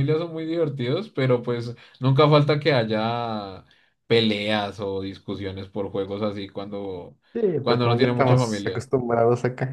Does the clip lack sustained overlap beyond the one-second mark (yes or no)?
no